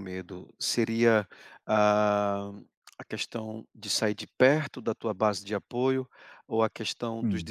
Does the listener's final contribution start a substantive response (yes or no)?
no